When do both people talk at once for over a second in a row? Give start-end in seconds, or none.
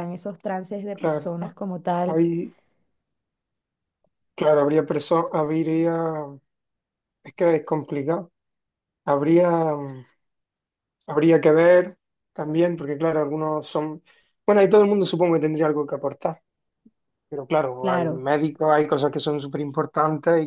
none